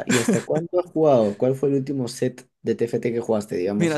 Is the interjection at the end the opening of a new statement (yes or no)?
yes